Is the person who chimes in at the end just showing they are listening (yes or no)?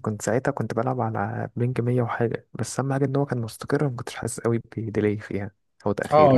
no